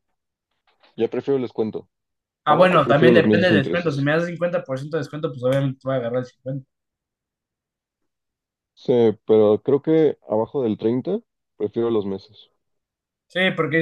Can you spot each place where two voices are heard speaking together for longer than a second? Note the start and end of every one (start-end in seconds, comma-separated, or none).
2.5-4.1